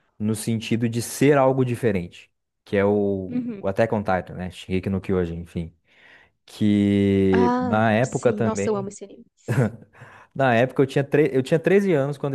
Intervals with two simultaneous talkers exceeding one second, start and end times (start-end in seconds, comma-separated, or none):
7.3-8.9